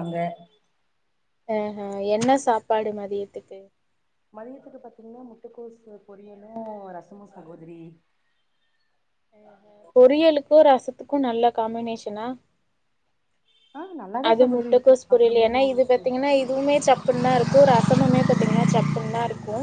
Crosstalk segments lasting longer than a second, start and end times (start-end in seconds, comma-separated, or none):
14.3-16.0